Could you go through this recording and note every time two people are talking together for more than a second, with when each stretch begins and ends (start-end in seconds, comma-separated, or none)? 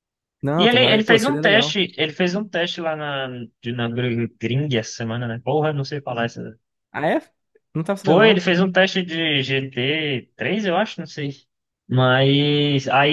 0.6-1.8